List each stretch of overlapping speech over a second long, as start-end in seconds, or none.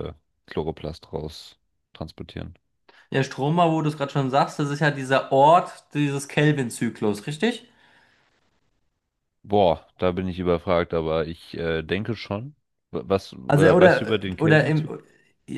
13.5-14.9